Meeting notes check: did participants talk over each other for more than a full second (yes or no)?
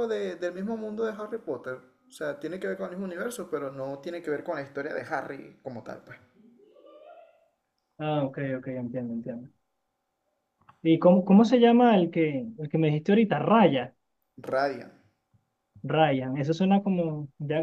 no